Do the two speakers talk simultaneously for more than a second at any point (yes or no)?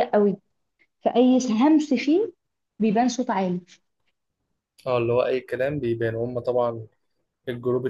no